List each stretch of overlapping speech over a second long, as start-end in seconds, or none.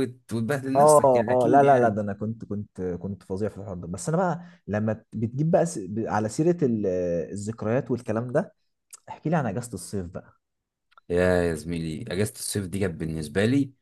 0.7-2.0